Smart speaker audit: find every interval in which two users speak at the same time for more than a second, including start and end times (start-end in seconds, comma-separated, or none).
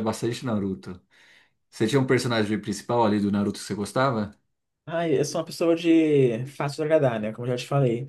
none